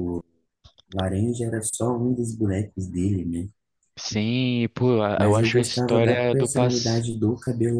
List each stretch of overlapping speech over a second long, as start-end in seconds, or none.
5.1-7.1